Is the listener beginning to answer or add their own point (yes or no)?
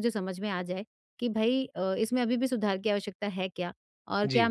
no